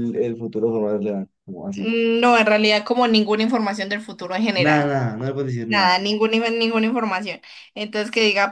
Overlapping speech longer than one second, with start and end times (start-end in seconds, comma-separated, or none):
none